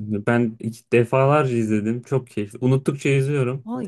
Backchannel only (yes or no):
no